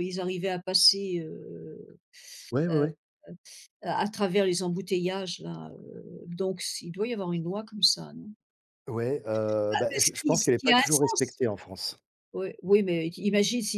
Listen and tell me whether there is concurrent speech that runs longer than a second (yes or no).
yes